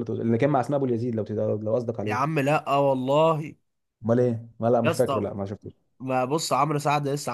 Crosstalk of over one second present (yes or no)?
no